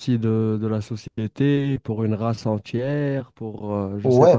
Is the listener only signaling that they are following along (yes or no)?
no